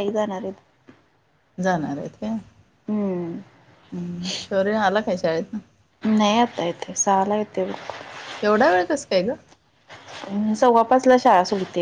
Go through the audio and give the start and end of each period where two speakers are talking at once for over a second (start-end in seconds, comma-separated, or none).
none